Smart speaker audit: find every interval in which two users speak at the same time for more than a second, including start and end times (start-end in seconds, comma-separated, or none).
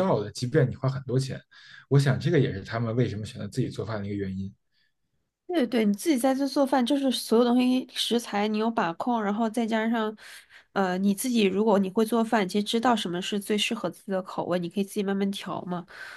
none